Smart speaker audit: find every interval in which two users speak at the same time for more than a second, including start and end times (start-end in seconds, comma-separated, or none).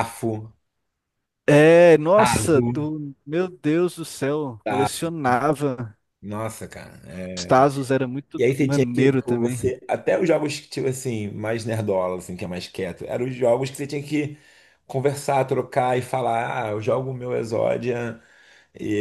8.4-9.6